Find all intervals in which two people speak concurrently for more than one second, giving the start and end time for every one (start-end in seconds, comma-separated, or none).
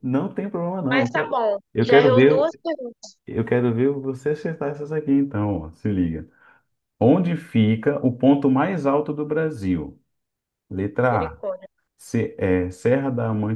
0.9-2.6